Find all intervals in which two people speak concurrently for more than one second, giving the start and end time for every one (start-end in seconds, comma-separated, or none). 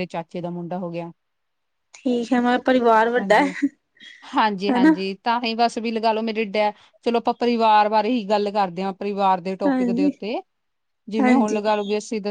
none